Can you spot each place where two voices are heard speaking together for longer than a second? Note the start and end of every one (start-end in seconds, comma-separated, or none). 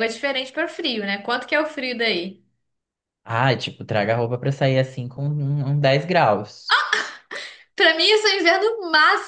none